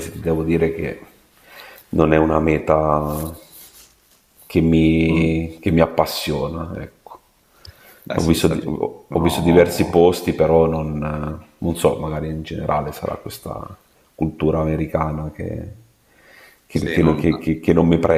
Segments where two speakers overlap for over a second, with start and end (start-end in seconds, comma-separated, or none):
8.1-10.0